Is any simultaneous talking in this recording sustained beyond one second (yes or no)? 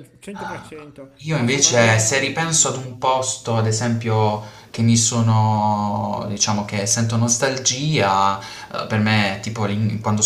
yes